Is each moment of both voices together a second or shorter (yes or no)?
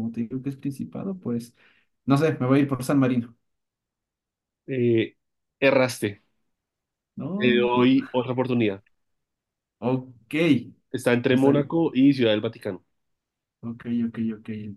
yes